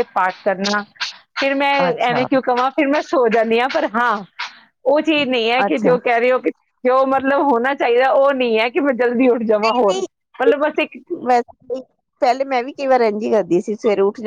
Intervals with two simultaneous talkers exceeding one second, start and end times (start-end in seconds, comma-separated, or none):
none